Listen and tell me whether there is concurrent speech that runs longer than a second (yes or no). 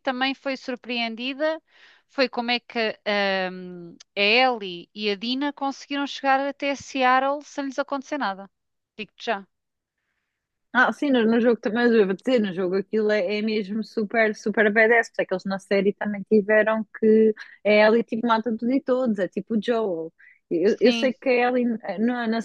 no